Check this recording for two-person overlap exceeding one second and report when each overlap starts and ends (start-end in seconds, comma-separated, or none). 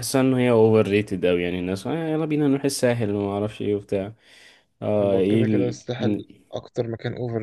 5.0-6.3